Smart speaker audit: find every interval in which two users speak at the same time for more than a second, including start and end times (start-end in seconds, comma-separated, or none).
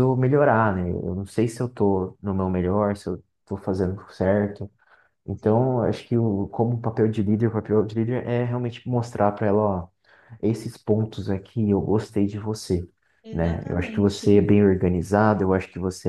13.3-14.5